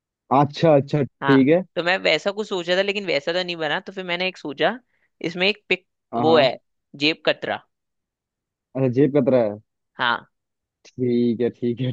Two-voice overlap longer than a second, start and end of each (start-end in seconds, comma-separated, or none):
none